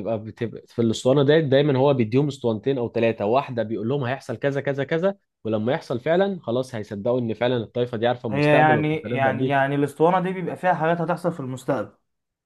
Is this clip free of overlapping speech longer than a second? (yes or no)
no